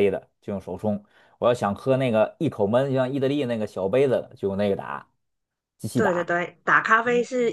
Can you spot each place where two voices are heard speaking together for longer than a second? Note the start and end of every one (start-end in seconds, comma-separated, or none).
none